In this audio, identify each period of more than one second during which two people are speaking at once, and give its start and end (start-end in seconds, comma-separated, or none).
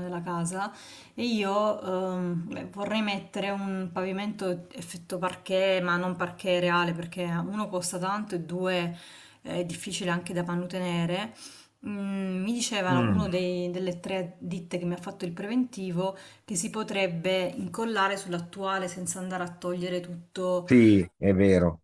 none